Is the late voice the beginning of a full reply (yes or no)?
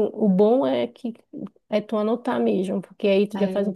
no